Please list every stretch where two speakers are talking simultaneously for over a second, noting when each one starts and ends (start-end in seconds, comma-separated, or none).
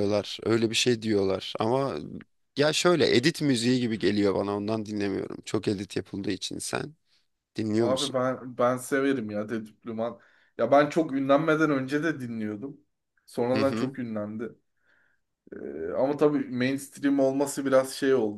none